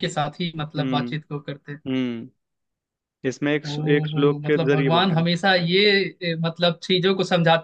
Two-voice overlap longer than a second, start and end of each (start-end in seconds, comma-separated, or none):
3.6-5.3